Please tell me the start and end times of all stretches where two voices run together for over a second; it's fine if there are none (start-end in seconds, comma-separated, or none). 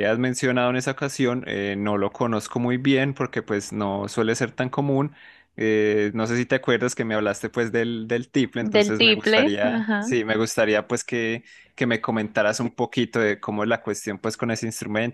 8.6-10.2